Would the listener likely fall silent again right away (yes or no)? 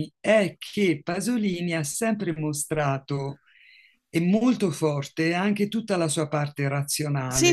no